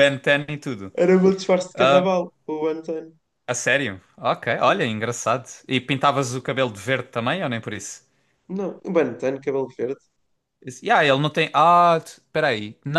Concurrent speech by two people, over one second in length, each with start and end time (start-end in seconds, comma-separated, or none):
none